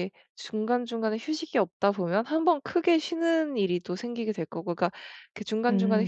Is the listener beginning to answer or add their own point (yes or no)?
no